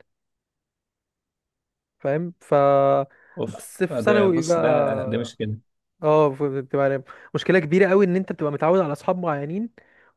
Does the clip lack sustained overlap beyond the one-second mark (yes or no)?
no